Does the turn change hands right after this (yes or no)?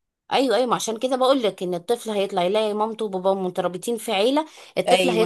yes